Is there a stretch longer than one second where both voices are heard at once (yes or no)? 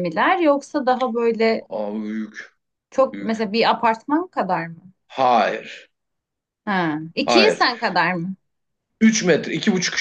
no